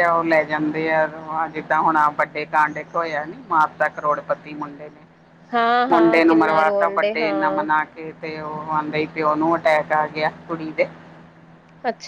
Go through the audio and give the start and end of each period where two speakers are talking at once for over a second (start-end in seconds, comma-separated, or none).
5.9-7.6